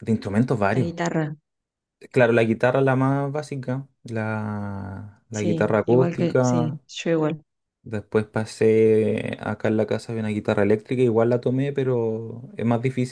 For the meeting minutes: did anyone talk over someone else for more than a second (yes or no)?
yes